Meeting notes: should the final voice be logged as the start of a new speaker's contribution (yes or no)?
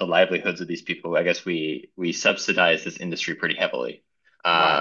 no